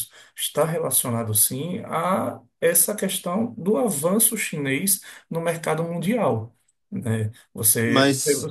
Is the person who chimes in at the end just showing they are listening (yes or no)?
yes